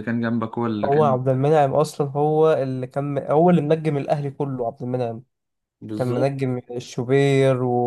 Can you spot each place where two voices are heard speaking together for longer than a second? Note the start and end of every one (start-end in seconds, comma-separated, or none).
none